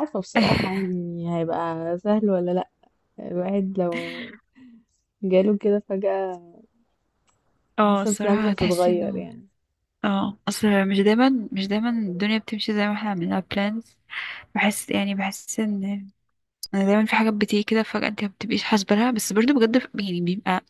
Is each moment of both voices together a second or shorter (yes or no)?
no